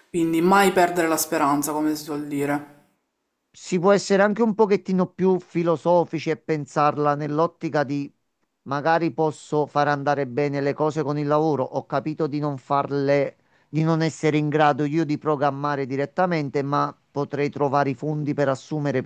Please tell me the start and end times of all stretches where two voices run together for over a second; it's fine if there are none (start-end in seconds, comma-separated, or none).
none